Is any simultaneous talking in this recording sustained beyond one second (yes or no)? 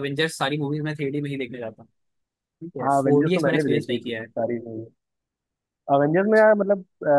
yes